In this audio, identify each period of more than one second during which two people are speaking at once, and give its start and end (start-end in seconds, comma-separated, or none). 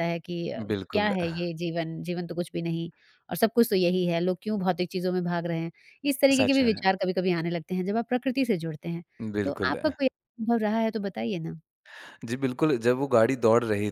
none